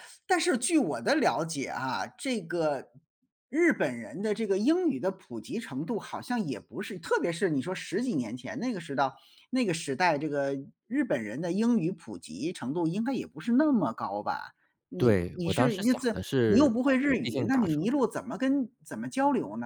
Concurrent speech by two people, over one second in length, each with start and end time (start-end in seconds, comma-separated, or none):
15.0-18.0